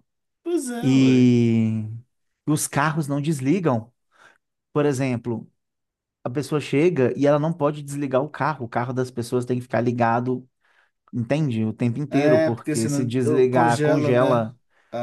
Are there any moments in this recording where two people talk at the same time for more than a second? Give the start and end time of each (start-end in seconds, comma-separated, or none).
12.1-14.5